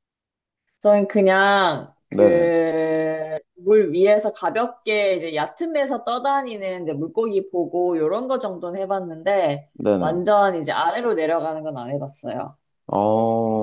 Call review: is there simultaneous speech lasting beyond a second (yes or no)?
no